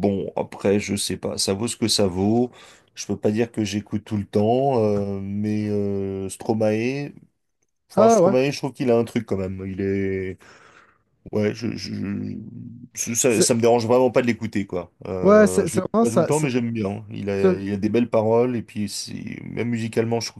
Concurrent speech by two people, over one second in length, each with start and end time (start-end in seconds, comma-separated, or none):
15.2-16.5